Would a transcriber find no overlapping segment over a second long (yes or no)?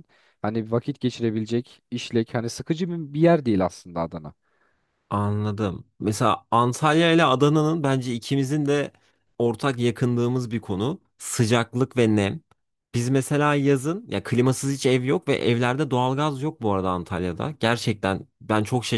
yes